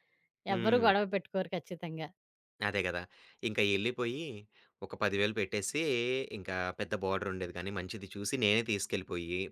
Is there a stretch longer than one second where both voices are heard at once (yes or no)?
no